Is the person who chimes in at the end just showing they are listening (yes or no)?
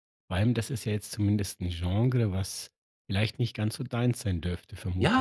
no